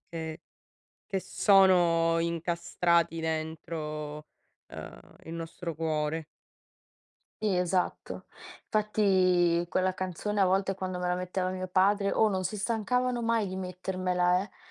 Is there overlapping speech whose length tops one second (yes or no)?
no